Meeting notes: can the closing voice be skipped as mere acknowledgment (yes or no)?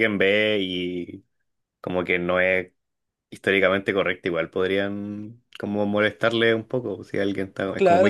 no